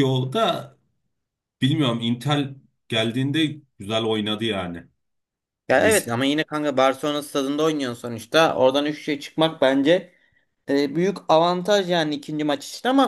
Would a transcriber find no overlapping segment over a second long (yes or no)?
yes